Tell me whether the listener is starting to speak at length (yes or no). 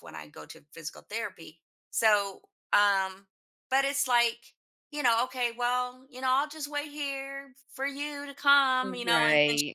no